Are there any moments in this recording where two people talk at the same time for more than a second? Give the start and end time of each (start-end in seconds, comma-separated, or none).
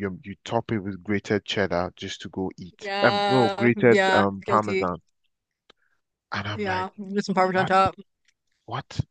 2.8-4.8